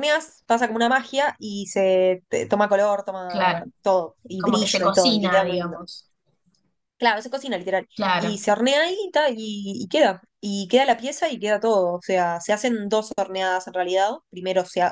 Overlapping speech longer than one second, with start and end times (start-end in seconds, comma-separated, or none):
4.4-5.8